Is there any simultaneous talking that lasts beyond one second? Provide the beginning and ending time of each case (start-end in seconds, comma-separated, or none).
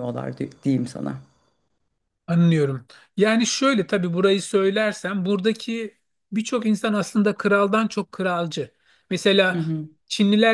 none